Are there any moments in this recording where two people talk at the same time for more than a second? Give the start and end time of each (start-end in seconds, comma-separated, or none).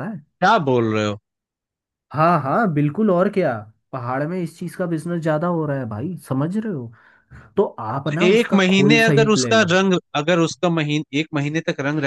8.1-9.8